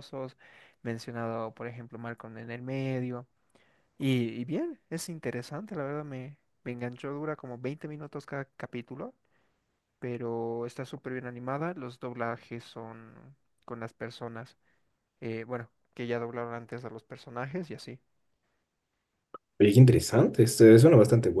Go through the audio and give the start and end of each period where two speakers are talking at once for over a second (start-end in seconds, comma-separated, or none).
none